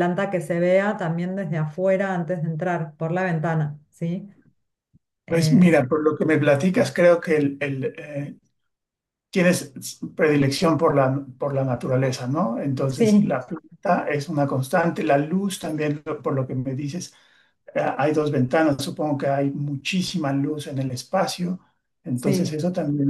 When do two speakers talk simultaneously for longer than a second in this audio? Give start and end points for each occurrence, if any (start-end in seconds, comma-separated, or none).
none